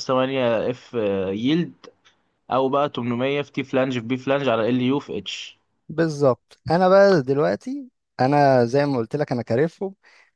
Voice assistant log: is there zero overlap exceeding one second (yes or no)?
yes